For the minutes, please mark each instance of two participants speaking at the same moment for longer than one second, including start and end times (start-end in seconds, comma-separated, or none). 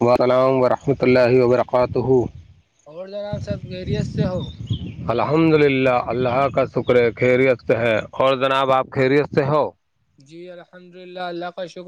none